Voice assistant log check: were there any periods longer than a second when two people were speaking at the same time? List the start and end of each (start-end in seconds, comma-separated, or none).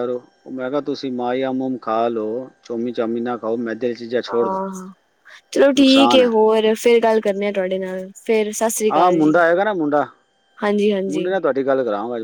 none